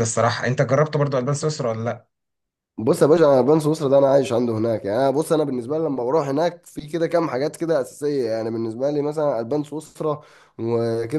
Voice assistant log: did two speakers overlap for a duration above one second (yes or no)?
no